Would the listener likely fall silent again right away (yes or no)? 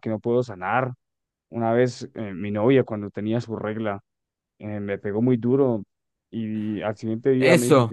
no